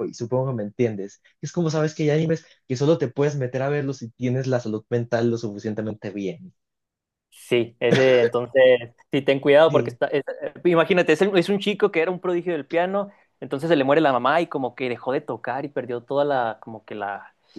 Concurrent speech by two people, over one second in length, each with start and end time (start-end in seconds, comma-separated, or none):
none